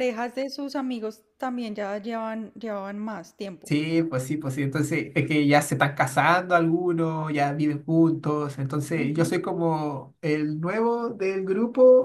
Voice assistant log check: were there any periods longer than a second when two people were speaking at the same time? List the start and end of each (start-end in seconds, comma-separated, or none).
none